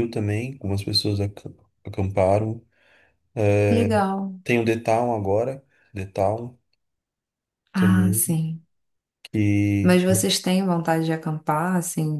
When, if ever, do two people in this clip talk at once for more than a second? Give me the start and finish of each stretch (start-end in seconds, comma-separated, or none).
none